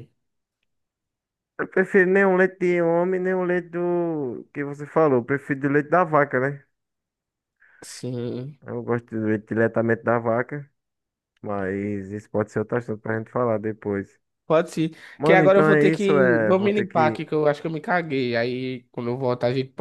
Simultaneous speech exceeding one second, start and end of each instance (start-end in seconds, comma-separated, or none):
15.2-17.2